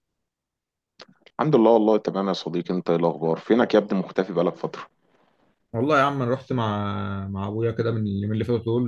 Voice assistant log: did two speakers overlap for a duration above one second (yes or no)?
no